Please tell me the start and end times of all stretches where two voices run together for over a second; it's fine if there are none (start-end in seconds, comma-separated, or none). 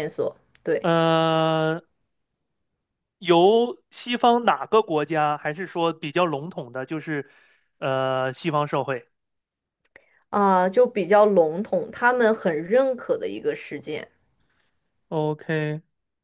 none